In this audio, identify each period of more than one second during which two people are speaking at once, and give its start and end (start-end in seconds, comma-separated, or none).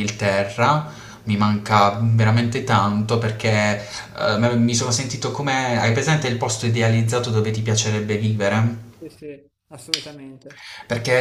none